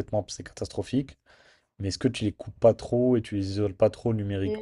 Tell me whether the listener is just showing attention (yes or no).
no